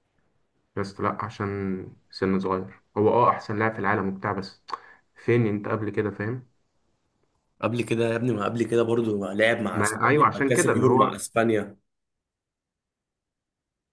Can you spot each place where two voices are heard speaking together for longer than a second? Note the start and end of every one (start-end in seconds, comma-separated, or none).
9.7-11.2